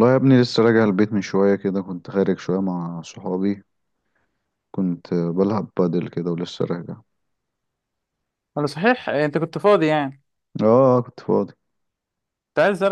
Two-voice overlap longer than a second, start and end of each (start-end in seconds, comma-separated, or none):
none